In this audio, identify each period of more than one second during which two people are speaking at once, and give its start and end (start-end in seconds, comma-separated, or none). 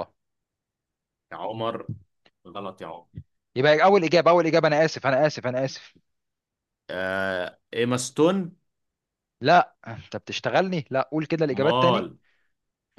none